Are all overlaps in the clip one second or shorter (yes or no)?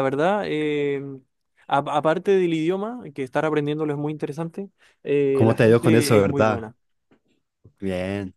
no